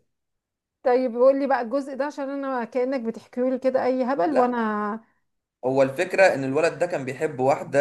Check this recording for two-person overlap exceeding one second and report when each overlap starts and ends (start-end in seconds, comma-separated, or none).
none